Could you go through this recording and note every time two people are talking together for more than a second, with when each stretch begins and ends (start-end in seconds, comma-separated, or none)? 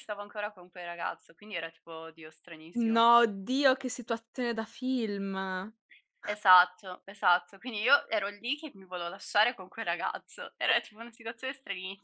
none